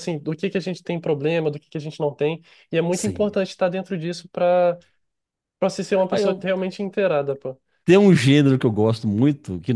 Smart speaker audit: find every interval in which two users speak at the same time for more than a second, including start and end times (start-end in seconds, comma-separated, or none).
none